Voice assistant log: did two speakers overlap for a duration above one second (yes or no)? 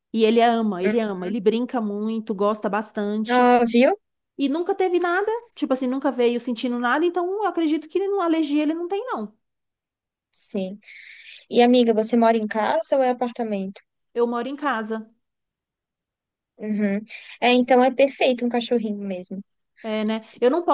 no